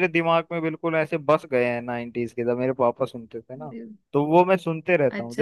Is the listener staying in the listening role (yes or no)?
yes